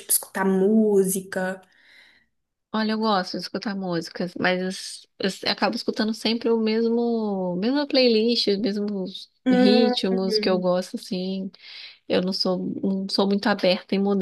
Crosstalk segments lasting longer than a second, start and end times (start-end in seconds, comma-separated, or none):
9.4-10.7